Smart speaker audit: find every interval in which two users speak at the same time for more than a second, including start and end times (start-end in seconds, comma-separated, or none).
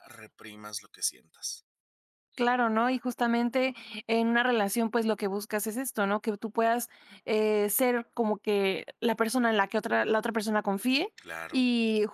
none